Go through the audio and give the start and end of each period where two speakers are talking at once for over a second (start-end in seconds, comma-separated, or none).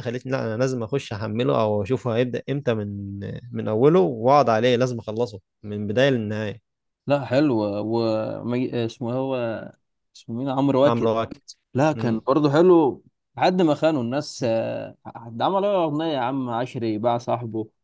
none